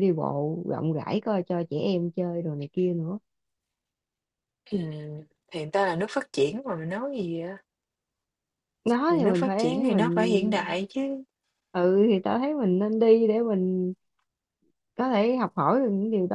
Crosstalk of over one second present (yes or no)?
yes